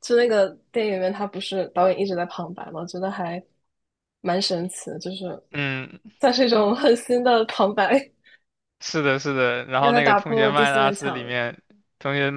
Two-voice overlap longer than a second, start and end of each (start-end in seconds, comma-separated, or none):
9.8-11.3